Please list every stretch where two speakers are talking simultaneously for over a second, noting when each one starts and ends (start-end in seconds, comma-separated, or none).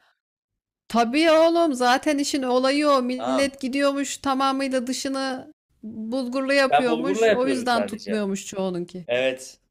6.7-8.2